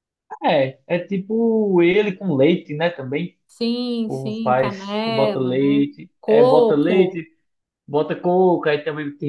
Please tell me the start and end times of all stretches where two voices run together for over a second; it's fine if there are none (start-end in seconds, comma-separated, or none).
4.1-7.2